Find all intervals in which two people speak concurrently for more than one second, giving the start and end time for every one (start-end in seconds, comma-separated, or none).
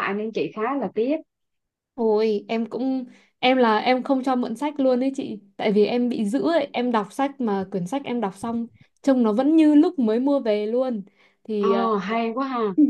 none